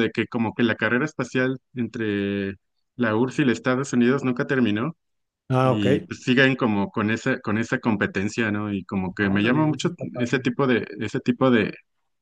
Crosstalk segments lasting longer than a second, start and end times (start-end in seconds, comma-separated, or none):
9.2-10.5